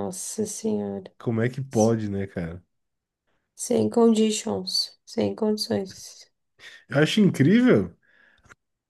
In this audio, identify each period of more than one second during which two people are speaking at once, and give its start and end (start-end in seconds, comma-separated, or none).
none